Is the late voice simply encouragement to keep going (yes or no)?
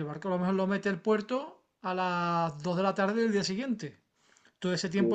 yes